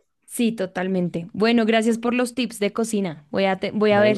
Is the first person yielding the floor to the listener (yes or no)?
no